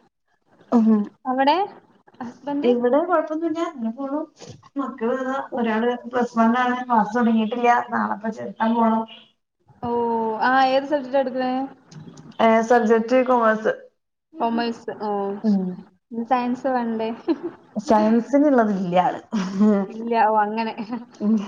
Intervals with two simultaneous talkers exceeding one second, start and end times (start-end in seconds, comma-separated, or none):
none